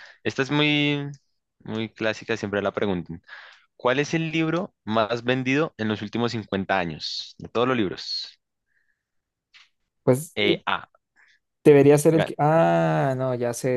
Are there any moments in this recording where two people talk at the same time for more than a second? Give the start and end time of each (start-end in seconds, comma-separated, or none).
none